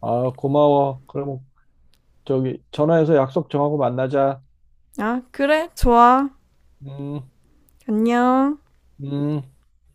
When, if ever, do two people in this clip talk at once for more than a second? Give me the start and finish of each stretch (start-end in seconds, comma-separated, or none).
none